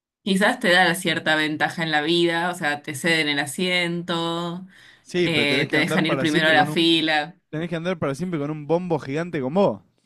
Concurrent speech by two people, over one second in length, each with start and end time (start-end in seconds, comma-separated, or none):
5.2-7.0